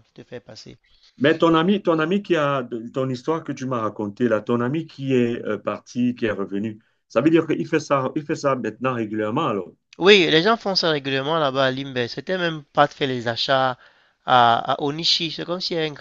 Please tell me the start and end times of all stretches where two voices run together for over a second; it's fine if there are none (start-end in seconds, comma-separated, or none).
none